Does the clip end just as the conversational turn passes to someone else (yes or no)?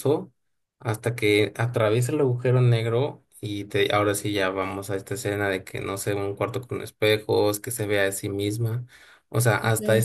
no